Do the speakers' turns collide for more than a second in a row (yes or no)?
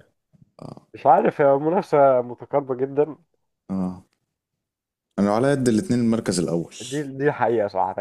no